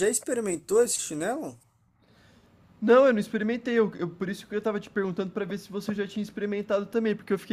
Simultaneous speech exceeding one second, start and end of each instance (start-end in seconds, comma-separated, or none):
none